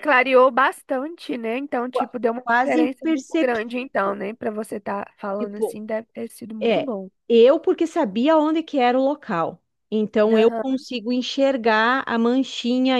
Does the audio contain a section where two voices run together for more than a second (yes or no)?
yes